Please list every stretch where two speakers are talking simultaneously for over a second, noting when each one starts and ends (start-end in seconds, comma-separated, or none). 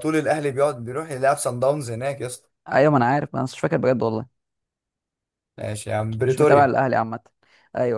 none